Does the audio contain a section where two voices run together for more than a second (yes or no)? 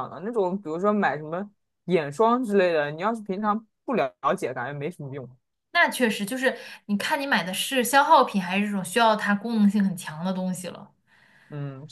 no